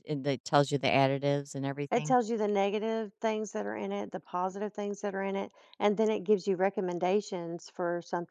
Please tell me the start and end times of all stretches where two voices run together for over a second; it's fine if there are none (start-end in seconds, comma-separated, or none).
none